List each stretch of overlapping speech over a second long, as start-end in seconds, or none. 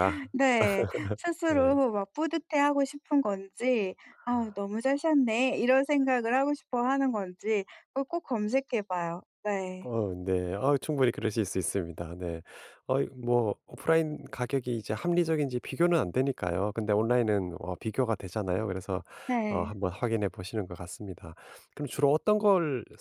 none